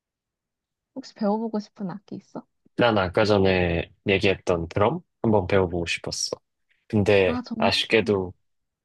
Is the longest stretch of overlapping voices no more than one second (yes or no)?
yes